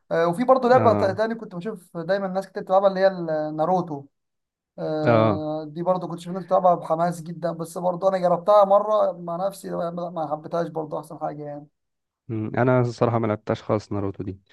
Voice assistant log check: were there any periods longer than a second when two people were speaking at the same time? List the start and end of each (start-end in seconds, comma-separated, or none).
none